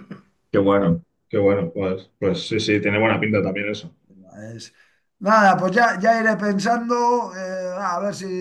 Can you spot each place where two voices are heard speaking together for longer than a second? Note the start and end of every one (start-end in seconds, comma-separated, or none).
none